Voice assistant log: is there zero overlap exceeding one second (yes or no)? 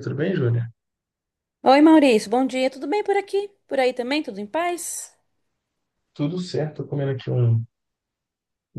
yes